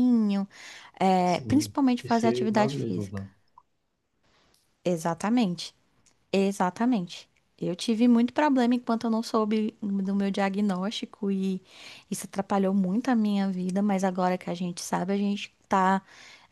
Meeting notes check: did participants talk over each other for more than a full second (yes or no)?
yes